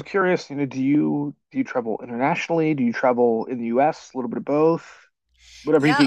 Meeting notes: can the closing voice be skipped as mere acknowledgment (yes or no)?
no